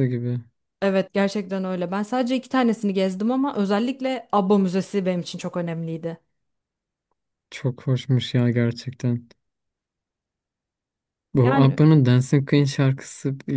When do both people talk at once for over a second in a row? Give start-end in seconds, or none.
none